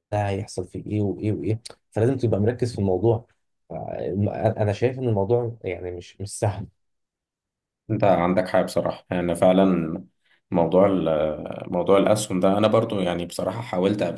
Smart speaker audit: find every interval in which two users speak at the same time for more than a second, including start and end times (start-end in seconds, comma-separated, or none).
none